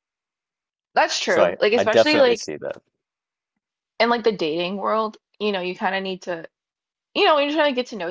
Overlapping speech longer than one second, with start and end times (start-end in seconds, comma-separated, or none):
1.3-2.5